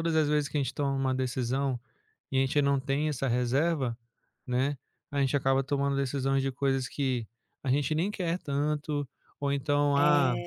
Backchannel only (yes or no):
yes